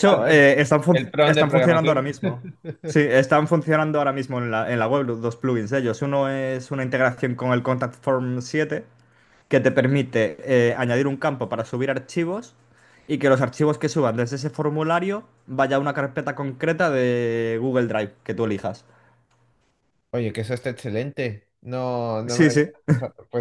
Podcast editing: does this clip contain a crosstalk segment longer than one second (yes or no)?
yes